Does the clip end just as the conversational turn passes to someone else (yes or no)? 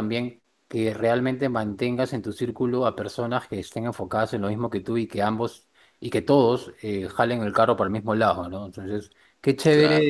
no